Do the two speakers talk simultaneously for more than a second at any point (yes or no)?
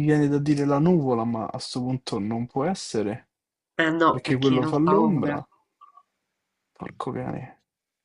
yes